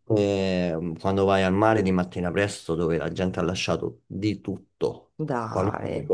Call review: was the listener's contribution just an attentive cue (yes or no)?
yes